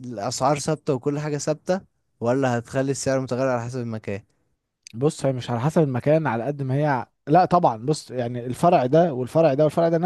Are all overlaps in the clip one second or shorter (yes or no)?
yes